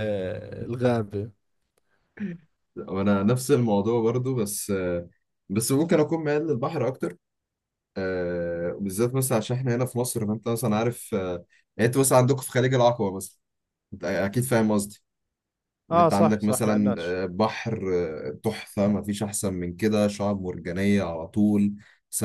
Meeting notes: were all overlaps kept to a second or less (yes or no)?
no